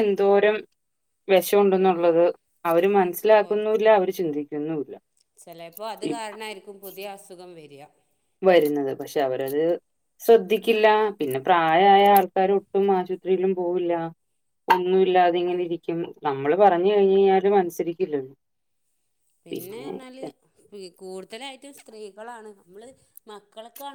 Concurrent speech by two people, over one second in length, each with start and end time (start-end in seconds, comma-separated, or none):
none